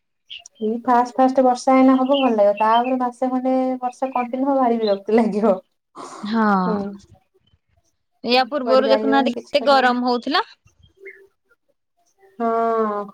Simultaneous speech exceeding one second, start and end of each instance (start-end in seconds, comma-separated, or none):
8.5-9.9